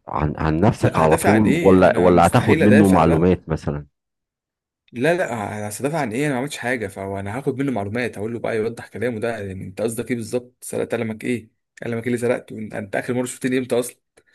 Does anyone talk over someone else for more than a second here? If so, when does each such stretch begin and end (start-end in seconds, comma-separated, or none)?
0.8-3.4